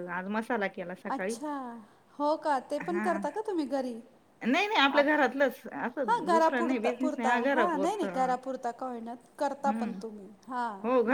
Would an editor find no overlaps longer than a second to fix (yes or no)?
no